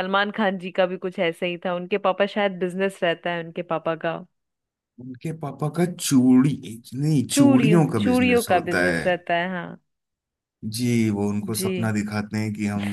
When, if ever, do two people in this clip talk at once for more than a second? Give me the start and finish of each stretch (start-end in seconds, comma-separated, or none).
7.3-9.1